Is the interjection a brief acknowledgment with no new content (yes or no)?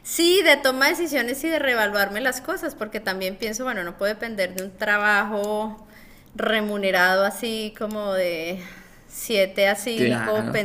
yes